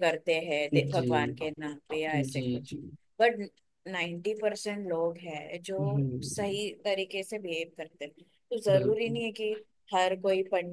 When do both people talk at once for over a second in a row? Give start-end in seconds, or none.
none